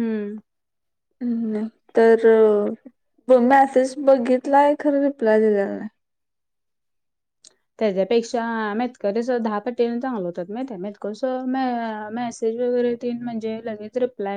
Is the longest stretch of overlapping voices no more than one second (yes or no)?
yes